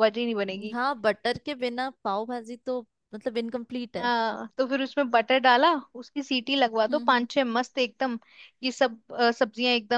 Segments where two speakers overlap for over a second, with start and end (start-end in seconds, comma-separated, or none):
none